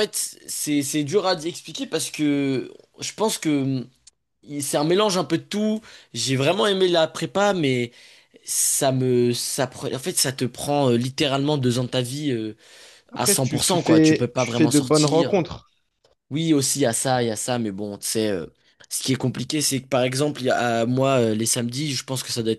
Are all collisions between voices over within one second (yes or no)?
no